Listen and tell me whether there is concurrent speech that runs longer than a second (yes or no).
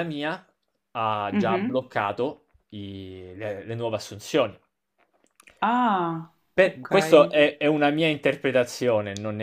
no